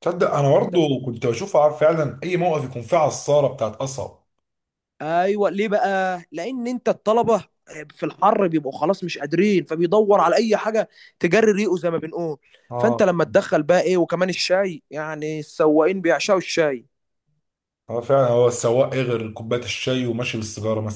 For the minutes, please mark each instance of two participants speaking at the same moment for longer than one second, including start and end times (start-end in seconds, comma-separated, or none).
none